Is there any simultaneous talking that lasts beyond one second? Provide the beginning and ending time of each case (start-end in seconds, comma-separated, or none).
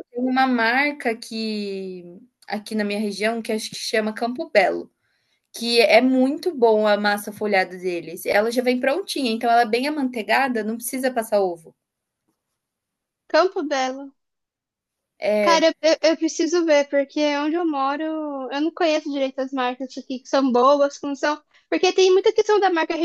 none